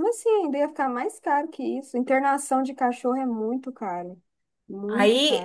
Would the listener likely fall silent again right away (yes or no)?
no